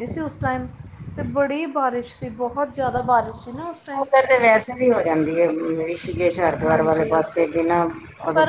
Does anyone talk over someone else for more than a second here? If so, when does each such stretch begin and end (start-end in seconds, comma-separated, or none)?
none